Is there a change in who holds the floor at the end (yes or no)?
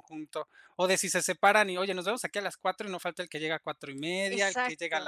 yes